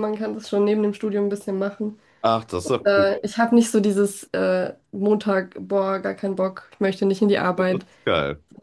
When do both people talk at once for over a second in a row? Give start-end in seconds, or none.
none